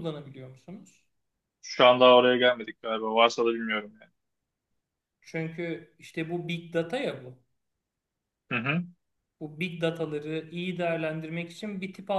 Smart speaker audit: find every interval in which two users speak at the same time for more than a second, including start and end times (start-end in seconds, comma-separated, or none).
none